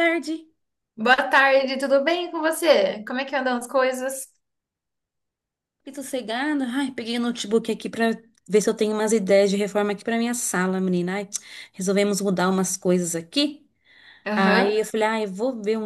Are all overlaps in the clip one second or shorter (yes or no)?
yes